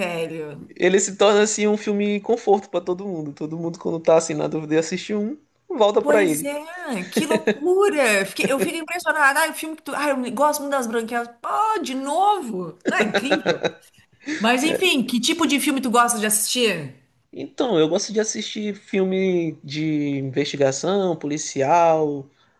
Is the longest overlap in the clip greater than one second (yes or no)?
no